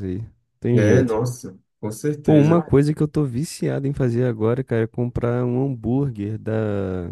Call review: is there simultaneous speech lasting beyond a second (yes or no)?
no